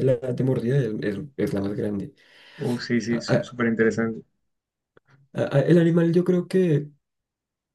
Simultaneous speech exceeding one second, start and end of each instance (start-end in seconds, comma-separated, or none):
none